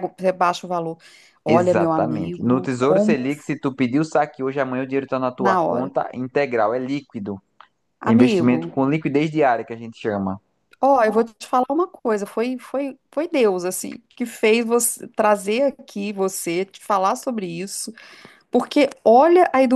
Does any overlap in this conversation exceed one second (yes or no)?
yes